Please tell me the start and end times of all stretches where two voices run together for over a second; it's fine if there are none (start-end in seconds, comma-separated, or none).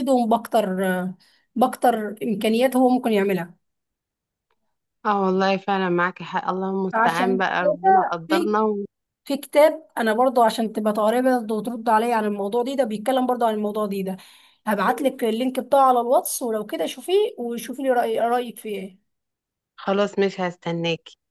6.9-8.5